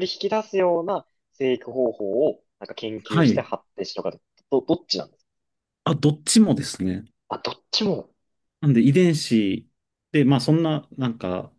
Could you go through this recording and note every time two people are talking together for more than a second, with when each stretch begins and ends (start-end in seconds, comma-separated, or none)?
none